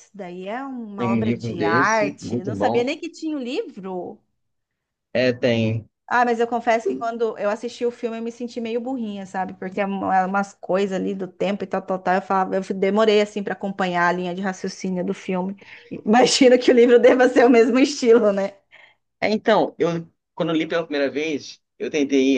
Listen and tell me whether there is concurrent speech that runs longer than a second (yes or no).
yes